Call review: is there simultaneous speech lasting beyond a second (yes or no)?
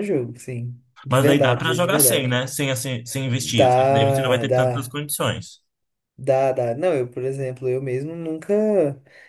yes